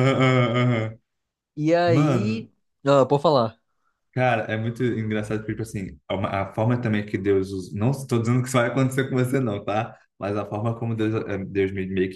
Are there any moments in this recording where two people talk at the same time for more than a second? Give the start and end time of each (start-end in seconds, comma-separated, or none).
none